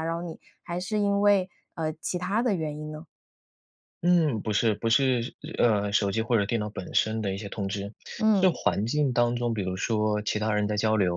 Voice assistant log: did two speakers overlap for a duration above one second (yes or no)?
no